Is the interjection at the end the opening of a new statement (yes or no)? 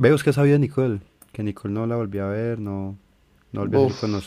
yes